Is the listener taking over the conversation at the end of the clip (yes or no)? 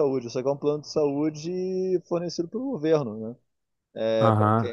yes